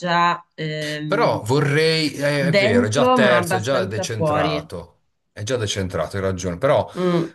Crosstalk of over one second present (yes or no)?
yes